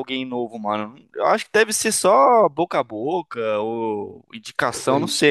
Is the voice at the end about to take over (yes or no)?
no